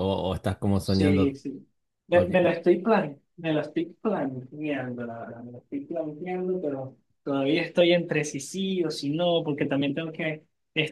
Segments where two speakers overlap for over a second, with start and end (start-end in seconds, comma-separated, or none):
none